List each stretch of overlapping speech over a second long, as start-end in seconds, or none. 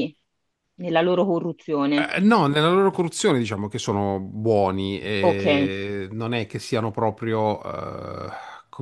none